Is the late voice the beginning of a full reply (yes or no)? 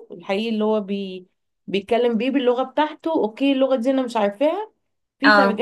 no